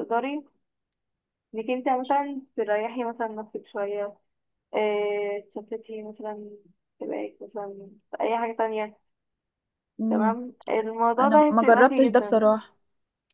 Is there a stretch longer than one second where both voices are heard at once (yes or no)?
yes